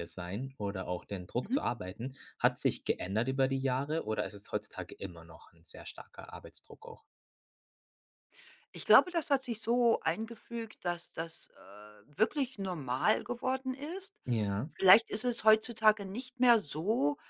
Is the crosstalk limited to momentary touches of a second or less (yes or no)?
yes